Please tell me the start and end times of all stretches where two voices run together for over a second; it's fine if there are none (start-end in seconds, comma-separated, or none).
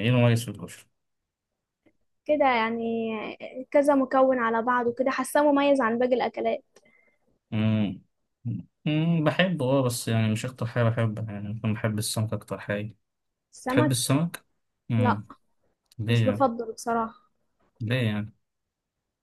none